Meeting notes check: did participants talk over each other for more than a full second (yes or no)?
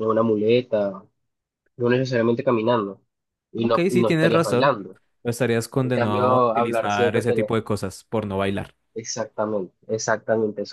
yes